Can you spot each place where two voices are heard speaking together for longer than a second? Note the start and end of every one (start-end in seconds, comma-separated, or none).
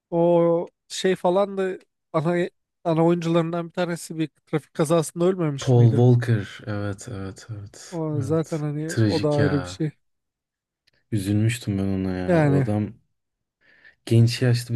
7.9-9.8